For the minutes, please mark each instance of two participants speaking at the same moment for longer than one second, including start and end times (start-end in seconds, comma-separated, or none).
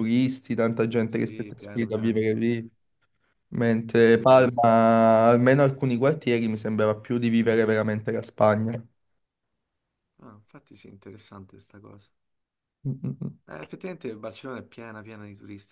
1.1-2.5